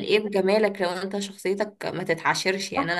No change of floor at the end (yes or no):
no